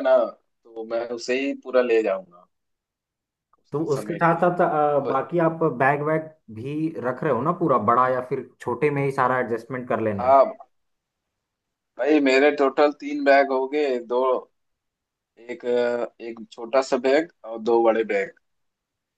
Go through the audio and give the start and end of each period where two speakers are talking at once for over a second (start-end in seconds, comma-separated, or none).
3.7-5.1